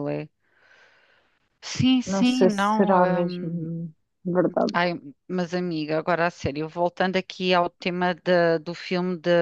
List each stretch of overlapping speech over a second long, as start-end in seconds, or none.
2.0-3.7